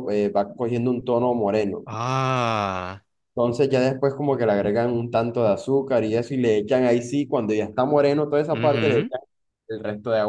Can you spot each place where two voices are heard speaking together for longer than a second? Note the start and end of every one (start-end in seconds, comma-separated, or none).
none